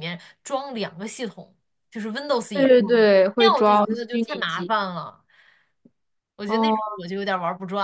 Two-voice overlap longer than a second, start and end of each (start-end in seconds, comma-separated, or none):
2.5-4.8